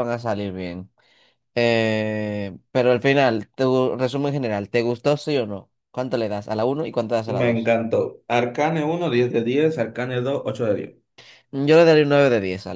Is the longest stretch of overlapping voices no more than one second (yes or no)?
yes